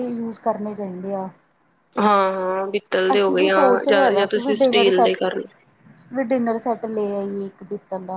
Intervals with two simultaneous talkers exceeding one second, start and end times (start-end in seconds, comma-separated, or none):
3.1-5.4